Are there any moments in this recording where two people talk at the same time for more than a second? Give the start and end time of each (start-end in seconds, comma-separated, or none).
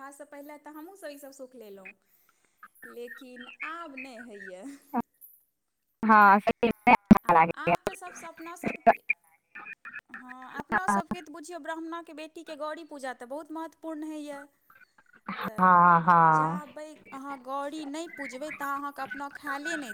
none